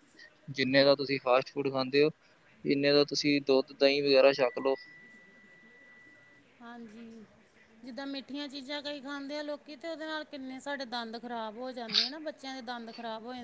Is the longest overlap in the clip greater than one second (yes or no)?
no